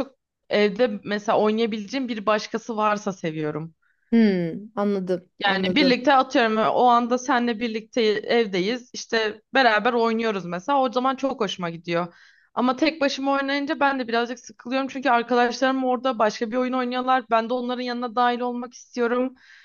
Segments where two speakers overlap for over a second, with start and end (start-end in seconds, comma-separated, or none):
none